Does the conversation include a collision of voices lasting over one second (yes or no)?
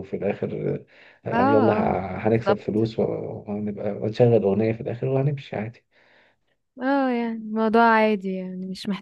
yes